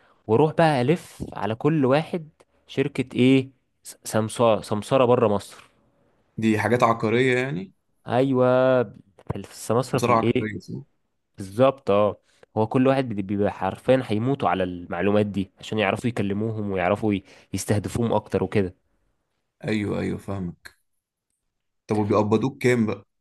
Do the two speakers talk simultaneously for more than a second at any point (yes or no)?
no